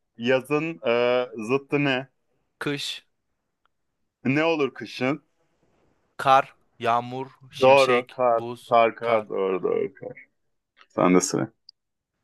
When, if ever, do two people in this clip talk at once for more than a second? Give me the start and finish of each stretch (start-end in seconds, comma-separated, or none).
7.6-9.3